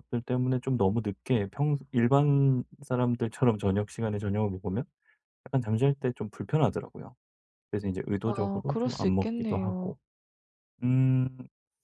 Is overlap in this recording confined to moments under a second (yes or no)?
no